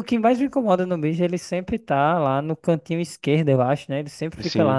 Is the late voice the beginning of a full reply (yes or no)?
no